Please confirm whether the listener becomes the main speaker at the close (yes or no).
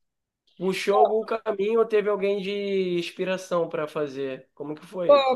yes